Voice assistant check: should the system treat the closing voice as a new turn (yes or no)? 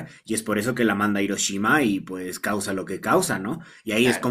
no